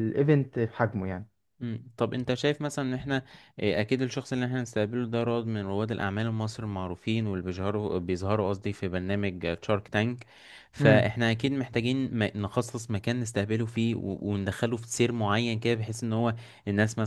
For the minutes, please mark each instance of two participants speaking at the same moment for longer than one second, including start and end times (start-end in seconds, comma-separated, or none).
none